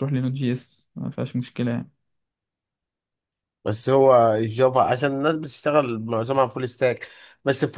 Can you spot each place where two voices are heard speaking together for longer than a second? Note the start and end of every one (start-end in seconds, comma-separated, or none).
none